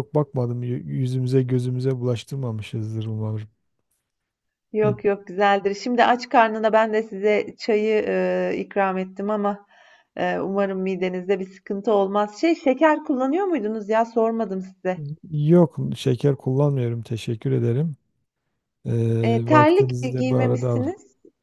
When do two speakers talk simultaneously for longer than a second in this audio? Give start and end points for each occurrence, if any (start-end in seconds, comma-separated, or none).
19.2-20.8